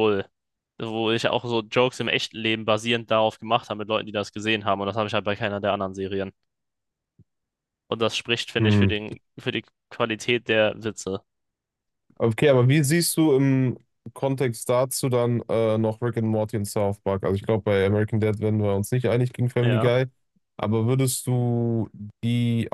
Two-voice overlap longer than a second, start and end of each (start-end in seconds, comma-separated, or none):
none